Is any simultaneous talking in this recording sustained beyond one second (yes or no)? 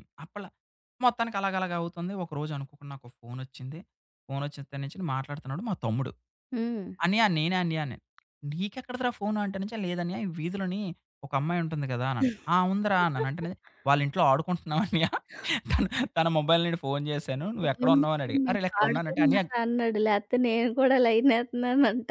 yes